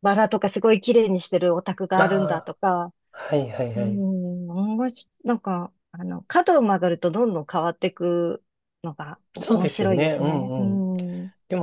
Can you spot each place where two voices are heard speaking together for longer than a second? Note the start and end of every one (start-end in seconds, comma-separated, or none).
9.4-10.9